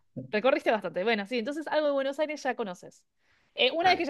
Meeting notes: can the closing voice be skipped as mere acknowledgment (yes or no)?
yes